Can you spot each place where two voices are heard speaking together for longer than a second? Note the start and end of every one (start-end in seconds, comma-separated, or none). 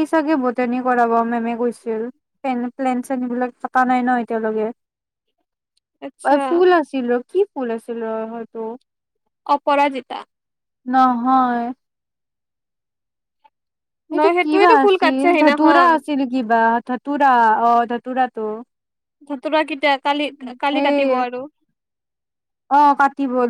14.2-15.9